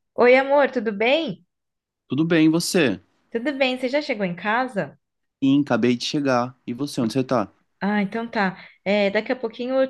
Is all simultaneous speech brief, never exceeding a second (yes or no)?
yes